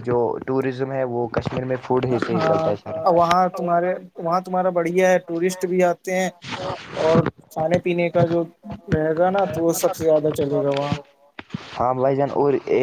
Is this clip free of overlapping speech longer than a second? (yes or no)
yes